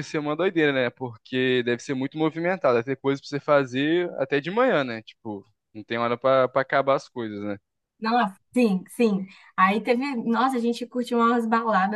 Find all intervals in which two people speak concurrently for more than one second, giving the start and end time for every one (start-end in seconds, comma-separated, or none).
none